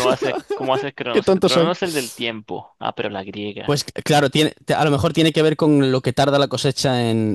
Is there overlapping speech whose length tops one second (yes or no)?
no